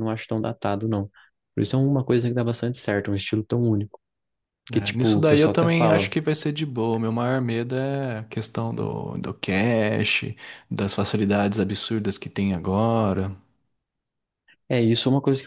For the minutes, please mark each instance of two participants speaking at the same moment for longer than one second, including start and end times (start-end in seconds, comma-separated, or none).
4.7-6.1